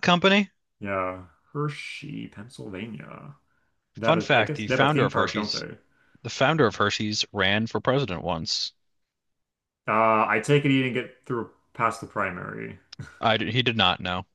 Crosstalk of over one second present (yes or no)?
yes